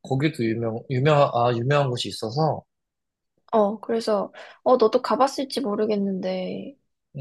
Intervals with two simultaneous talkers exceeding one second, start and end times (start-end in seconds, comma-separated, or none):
none